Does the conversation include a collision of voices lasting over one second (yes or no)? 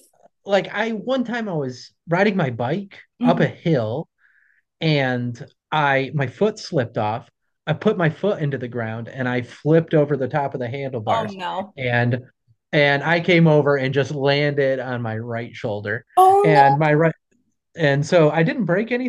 no